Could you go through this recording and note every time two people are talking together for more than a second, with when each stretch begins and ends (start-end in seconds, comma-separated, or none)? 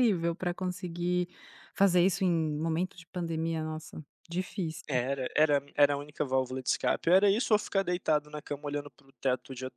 none